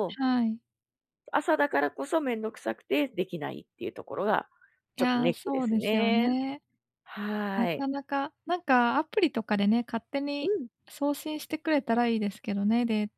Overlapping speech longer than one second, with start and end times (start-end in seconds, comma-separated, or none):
5.0-6.3